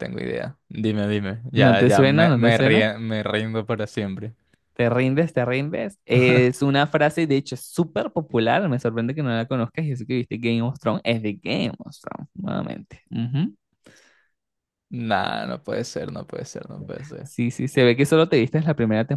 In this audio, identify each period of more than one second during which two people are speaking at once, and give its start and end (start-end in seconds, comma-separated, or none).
1.5-2.9